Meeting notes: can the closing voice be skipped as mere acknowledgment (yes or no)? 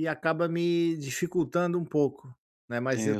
yes